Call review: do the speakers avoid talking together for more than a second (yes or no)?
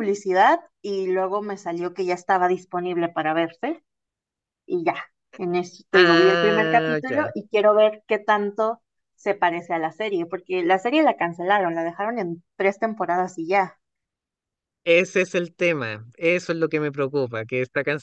no